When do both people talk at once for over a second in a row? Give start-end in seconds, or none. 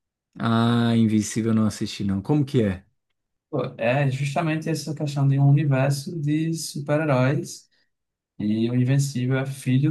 none